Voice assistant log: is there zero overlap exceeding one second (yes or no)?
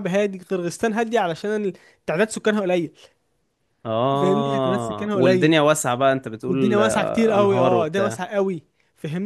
no